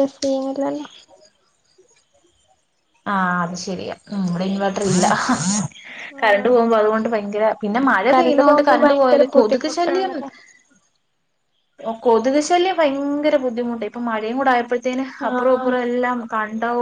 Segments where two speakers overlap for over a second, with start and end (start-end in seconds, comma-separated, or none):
7.7-10.1